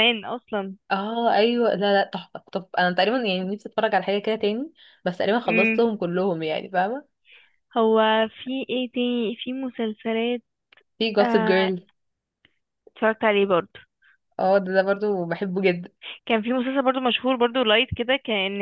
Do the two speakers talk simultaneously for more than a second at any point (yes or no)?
no